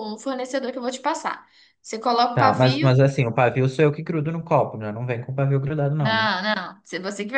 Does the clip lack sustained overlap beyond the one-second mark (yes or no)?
yes